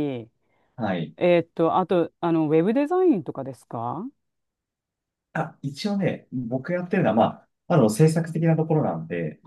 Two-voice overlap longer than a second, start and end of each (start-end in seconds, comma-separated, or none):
none